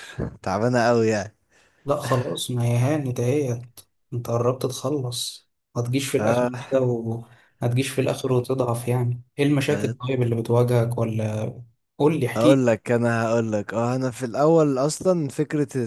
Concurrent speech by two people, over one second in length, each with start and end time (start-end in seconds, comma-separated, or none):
none